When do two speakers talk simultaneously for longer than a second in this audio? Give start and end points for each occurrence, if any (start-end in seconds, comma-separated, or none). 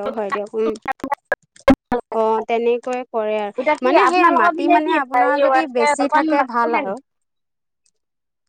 3.6-6.9